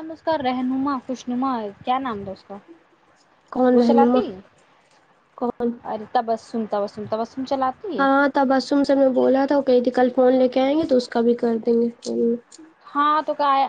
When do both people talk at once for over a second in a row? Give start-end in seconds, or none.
none